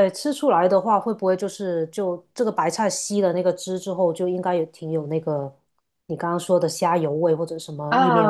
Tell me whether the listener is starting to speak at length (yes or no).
yes